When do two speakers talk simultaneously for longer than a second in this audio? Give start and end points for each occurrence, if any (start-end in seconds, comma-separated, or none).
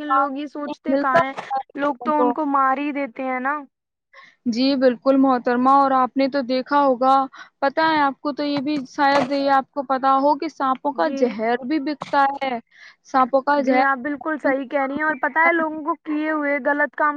none